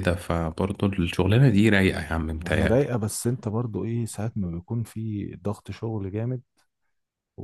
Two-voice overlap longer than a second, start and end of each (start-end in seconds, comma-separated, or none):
none